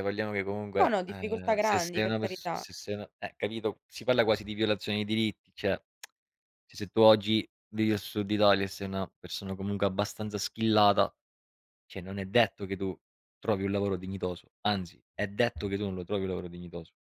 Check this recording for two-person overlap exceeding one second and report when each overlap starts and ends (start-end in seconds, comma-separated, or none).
0.8-2.7